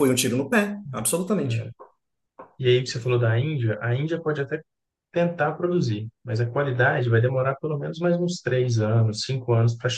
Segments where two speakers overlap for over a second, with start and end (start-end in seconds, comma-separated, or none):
none